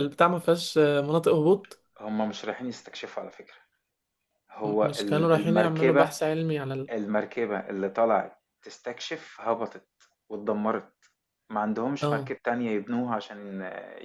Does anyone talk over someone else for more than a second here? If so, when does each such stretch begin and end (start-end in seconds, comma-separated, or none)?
4.6-6.2